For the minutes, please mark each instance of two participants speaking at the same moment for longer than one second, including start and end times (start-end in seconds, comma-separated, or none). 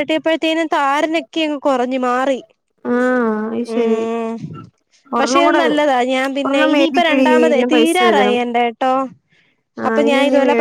6.5-8.4